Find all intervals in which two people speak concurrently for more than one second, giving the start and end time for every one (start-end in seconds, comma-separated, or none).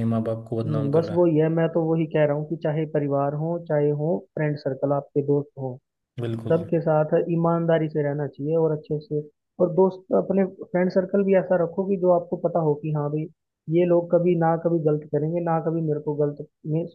none